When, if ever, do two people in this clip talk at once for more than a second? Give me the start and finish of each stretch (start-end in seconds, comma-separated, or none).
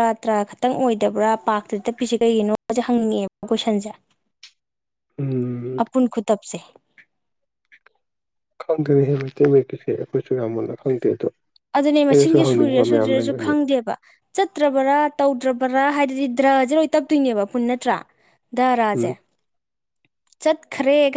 12.1-13.5